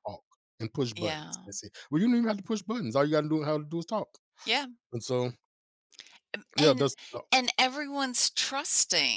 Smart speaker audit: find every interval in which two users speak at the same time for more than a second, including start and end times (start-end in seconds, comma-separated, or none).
none